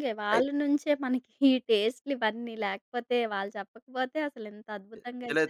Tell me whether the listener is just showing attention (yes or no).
no